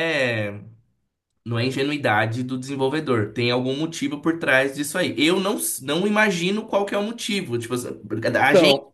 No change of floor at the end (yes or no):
yes